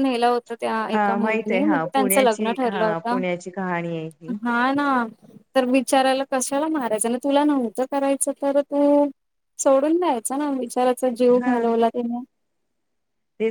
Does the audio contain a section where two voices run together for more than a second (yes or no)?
yes